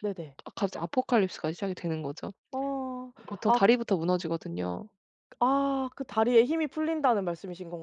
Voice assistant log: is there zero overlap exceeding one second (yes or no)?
yes